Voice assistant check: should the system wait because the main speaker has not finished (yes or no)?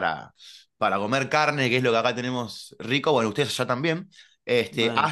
yes